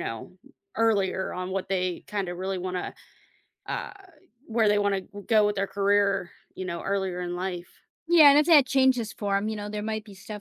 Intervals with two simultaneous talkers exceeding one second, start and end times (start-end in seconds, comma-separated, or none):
none